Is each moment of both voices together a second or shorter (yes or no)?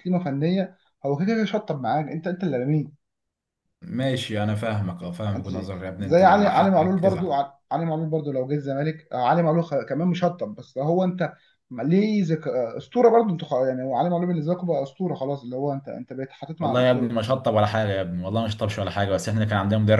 no